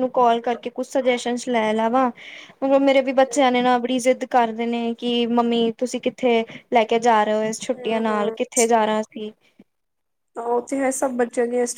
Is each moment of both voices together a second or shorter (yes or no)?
yes